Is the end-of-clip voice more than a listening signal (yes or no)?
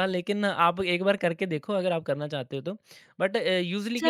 yes